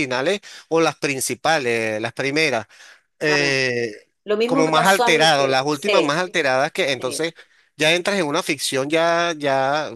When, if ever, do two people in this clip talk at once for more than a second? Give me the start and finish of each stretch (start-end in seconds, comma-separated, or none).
4.5-6.2